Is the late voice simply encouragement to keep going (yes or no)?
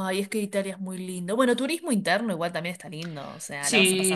no